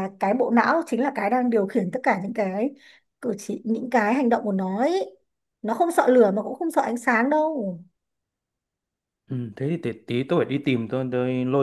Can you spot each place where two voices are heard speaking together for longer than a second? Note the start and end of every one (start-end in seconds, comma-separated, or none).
none